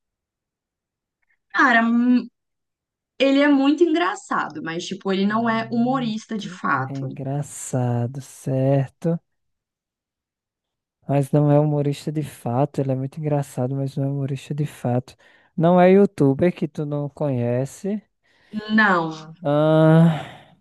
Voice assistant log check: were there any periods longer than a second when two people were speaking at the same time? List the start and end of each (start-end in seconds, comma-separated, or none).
5.3-7.1